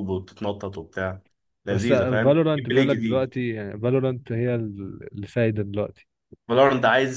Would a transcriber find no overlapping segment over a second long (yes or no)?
no